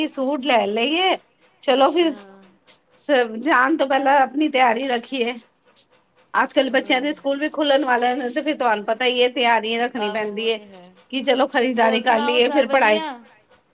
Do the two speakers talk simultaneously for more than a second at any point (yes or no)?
yes